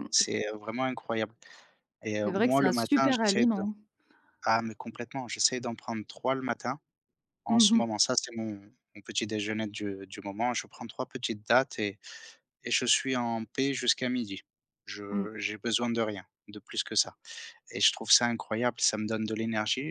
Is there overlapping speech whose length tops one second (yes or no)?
yes